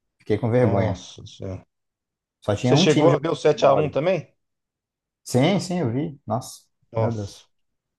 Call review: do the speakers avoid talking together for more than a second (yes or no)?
no